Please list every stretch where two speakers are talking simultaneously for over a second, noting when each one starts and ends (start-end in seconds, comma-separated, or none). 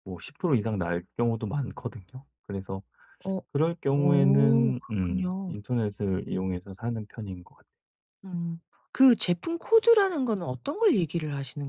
4.0-5.6